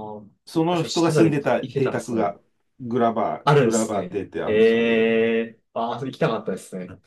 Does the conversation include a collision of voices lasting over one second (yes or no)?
yes